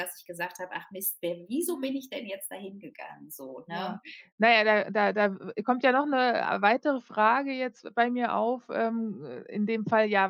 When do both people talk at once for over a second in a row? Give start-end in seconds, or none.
none